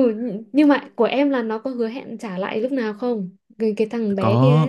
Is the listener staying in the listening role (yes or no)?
no